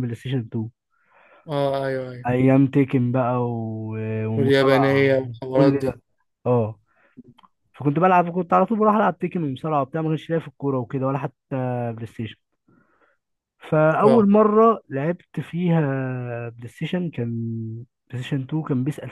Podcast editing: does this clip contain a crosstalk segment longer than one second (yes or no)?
yes